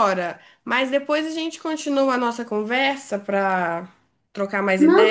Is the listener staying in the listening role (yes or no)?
no